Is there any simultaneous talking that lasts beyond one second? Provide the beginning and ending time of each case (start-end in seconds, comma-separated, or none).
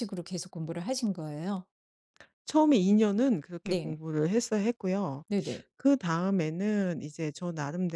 none